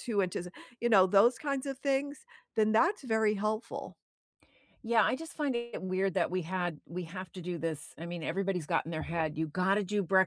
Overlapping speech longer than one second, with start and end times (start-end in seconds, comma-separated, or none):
none